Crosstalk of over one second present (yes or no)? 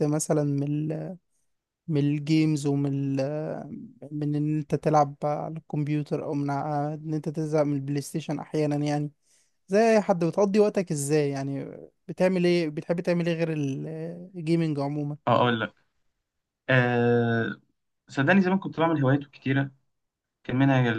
no